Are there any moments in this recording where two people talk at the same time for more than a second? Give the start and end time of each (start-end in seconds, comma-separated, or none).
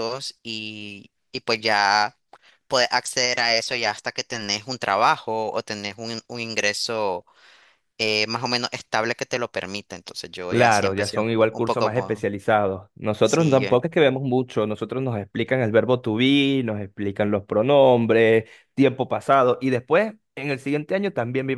10.5-12.3